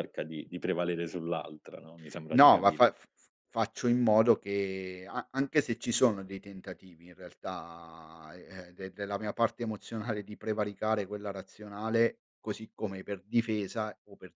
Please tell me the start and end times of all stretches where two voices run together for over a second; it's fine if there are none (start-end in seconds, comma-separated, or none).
none